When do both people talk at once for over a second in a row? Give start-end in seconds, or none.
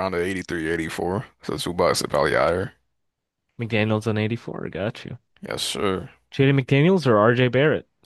none